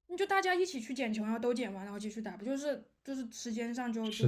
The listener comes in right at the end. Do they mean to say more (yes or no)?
no